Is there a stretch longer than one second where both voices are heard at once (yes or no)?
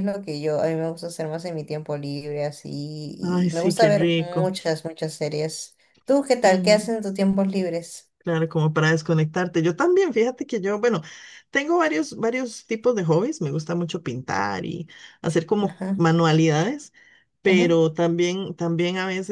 yes